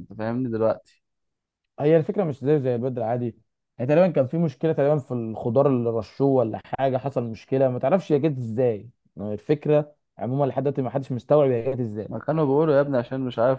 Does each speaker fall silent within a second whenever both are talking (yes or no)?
yes